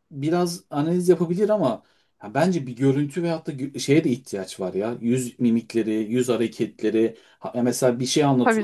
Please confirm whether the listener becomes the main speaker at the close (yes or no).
no